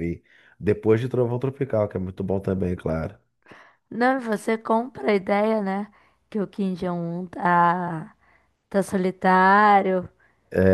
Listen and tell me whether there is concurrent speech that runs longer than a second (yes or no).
no